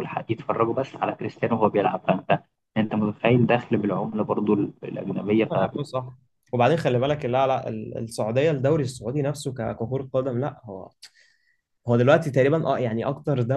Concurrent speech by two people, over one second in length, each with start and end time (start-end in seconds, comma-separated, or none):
none